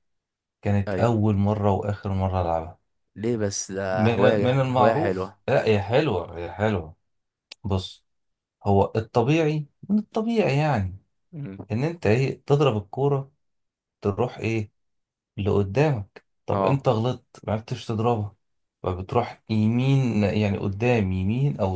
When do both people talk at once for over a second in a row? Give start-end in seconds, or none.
3.9-5.4